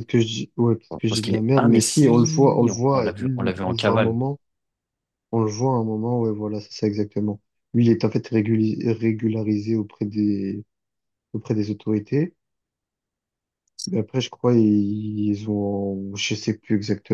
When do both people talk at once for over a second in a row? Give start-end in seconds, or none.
1.1-4.2